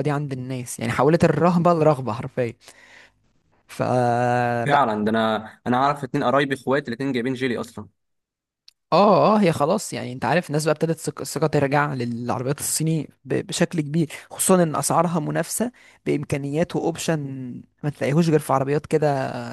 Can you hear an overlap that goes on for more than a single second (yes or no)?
no